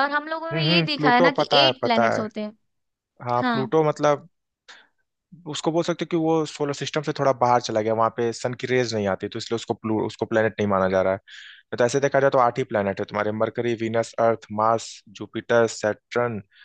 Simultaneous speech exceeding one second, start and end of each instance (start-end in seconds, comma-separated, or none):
0.5-2.2